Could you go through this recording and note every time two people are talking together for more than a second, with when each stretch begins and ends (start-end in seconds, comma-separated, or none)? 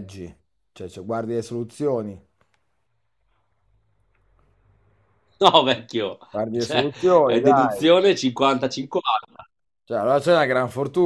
6.3-7.9